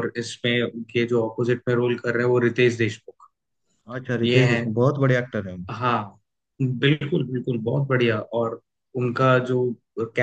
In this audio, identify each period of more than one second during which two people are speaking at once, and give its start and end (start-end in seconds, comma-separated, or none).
none